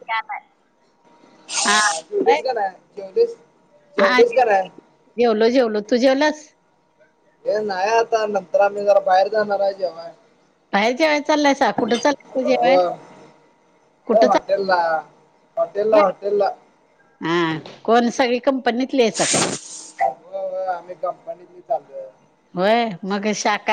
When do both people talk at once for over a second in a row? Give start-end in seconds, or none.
none